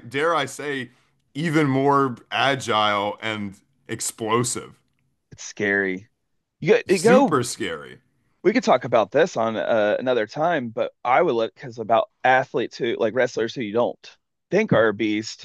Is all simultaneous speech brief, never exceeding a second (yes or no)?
yes